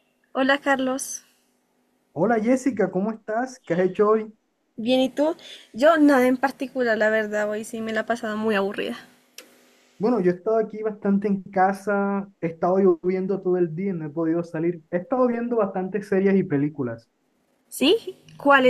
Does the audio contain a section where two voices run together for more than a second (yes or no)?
no